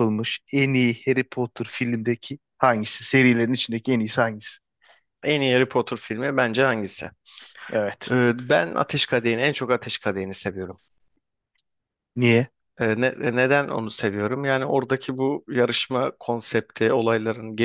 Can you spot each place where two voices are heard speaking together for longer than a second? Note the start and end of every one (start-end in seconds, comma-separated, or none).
none